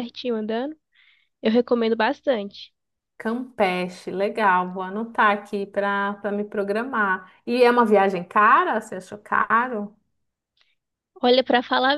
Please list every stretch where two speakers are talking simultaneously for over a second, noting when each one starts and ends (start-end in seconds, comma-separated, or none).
none